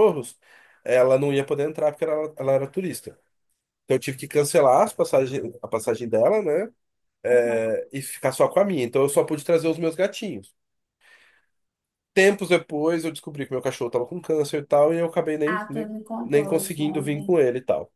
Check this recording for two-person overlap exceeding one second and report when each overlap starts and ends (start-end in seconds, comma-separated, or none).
15.4-17.4